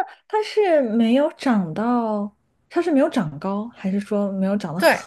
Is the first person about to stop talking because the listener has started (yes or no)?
yes